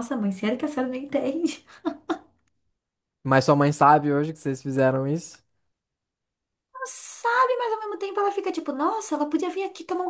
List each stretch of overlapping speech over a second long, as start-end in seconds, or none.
none